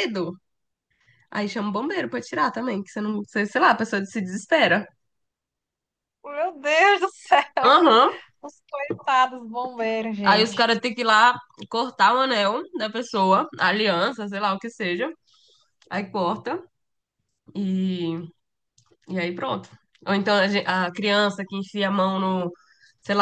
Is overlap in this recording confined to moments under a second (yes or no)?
yes